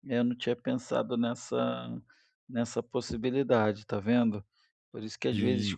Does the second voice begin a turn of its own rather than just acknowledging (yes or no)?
no